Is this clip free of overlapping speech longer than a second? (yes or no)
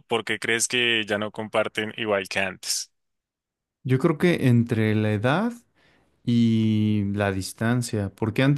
yes